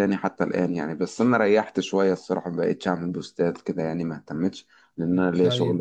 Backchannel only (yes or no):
no